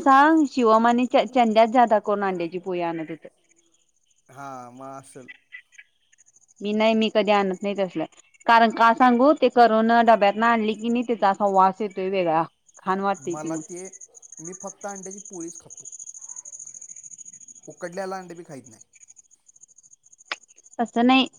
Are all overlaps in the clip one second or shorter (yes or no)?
yes